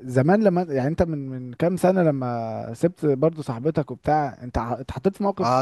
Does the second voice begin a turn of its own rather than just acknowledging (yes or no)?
yes